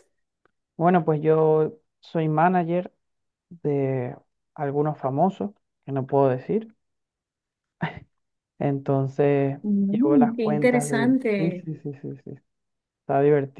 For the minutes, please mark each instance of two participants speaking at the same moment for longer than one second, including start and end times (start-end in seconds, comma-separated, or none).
9.6-11.7